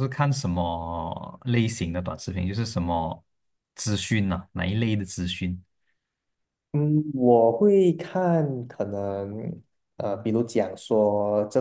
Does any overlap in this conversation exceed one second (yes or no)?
no